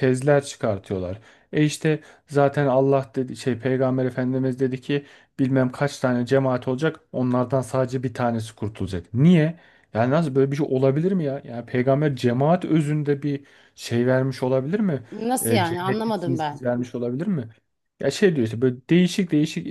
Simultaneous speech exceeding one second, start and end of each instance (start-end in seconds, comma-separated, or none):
15.4-16.7